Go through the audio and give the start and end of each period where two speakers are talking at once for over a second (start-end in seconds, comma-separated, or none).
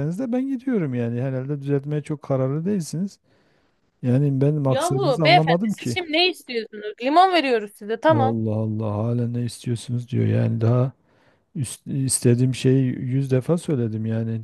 4.6-6.0